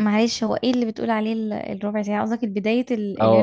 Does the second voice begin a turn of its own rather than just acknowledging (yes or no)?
yes